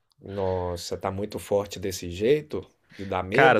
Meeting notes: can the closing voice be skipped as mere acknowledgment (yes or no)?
no